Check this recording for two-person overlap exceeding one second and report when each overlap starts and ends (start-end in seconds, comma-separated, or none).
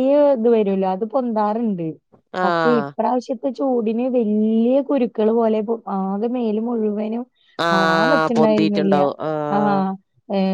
7.7-9.0